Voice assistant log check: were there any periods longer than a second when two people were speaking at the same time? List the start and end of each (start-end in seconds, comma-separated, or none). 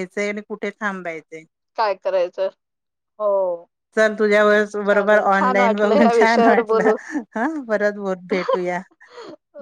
4.9-6.9